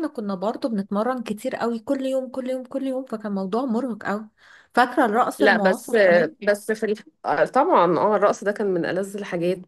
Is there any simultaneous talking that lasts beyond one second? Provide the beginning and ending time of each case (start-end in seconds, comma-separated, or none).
none